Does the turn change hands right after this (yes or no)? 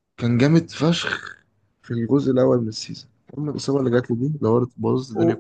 yes